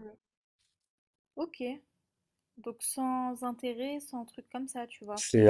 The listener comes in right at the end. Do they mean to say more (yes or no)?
yes